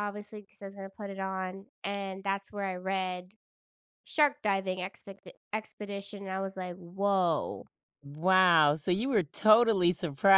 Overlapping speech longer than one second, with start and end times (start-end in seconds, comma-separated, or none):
none